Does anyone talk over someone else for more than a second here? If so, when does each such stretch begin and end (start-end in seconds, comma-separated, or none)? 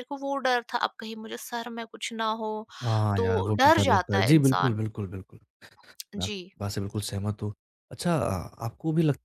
3.2-4.8